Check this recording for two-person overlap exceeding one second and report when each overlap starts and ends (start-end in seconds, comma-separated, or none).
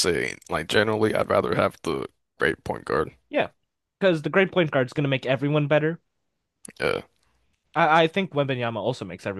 none